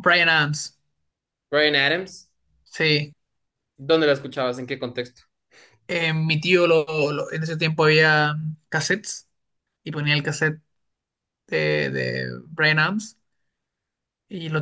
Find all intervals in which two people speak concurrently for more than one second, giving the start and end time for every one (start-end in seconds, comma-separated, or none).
none